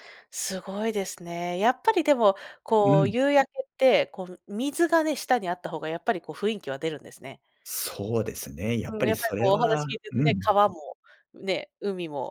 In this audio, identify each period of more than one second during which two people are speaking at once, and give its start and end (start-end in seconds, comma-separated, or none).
8.9-10.6